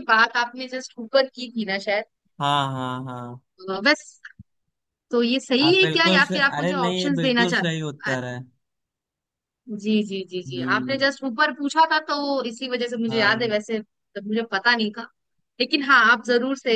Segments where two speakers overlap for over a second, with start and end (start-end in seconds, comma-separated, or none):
5.7-8.2